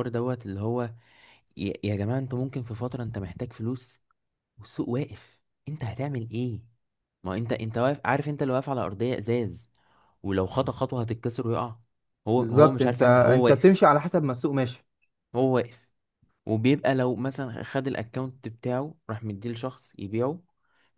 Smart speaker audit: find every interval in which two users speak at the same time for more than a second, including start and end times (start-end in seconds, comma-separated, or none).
12.4-13.8